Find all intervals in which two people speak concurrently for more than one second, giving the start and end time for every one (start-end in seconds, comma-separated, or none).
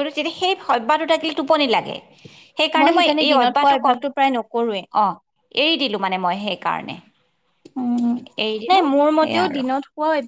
3.3-4.8